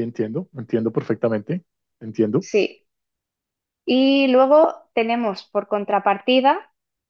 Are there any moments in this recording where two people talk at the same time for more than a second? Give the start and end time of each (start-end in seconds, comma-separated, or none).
none